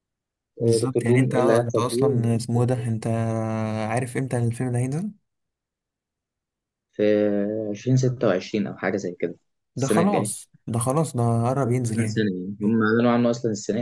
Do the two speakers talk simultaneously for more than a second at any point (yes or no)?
yes